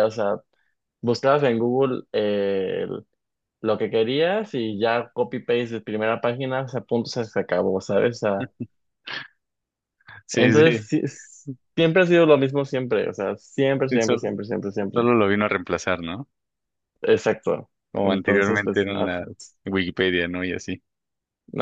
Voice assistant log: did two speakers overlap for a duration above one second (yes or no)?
yes